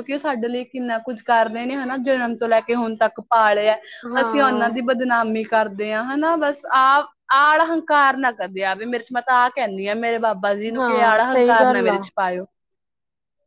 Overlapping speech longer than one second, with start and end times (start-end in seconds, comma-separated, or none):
10.8-12.0